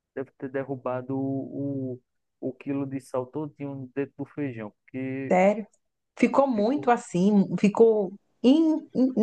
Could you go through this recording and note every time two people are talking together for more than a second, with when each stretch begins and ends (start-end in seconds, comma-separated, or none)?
none